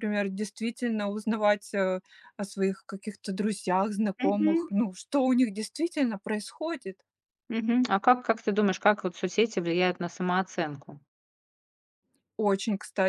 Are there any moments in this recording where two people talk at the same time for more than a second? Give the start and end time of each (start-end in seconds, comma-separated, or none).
none